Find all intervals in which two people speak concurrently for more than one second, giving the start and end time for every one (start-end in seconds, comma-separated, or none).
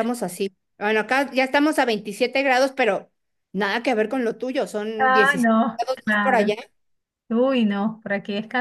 5.0-6.5